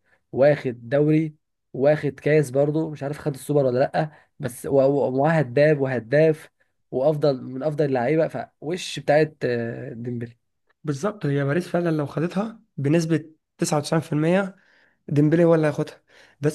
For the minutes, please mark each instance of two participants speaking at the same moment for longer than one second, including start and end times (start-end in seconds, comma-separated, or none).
none